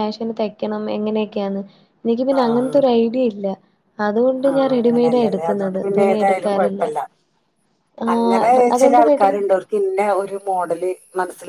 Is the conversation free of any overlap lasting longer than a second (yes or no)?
no